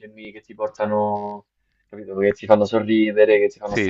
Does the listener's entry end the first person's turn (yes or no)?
yes